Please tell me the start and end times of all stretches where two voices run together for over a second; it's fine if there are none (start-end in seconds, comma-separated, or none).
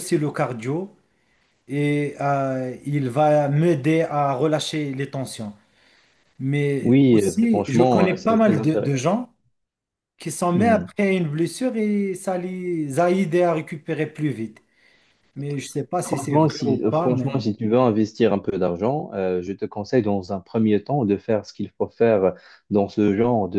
6.8-8.9, 16.0-17.4